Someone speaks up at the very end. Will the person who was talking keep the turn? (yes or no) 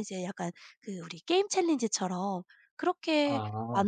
yes